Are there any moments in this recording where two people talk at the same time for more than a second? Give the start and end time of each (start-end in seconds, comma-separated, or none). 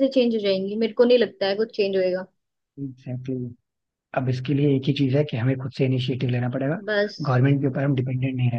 none